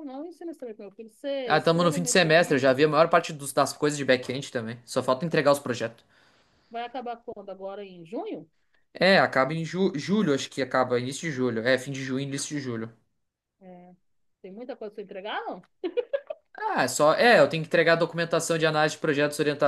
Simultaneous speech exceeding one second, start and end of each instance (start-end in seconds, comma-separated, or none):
1.5-2.8